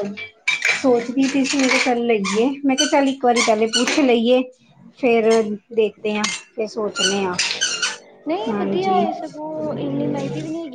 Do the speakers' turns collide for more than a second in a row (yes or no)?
no